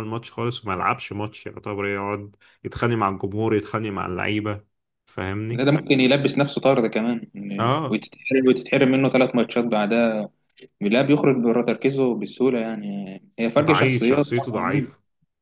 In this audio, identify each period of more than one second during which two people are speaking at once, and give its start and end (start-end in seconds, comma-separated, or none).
13.6-14.9